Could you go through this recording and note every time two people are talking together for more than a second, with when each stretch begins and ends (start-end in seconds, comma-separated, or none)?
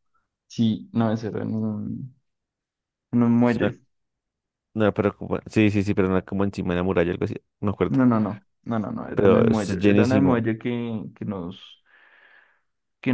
9.1-10.4